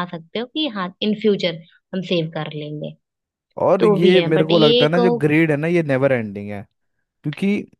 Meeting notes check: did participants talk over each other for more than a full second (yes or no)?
yes